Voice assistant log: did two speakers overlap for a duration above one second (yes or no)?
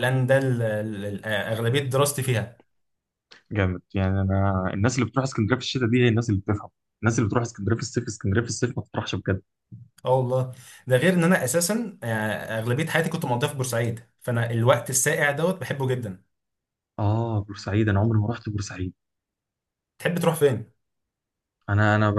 no